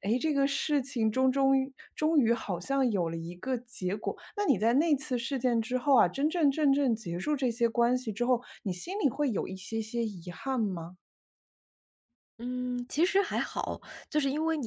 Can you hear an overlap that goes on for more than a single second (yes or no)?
no